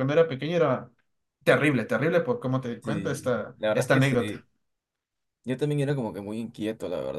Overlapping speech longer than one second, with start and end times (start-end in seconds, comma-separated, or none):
2.8-4.3